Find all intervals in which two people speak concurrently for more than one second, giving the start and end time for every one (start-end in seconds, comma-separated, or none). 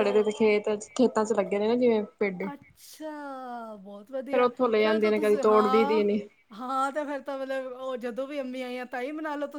4.3-6.0